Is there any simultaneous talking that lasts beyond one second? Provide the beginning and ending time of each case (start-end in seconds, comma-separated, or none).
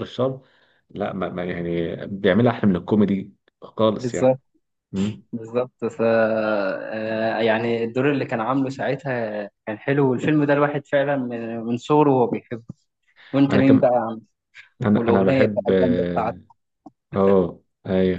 14.9-16.4